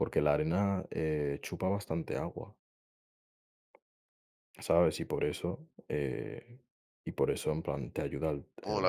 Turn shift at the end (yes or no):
yes